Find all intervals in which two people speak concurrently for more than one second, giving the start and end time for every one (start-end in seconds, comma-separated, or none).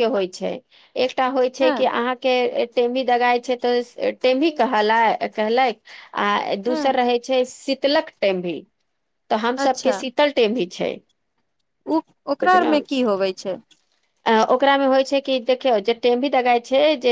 none